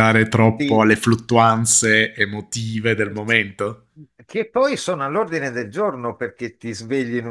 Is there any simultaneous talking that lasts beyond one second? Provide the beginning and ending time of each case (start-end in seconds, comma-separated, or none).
none